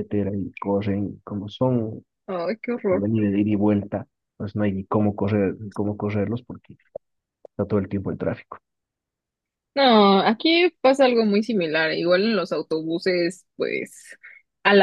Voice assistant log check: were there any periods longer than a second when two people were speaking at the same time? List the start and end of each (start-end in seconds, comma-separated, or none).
none